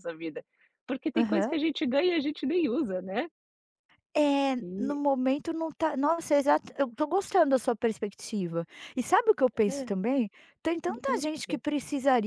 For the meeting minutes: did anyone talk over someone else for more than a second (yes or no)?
no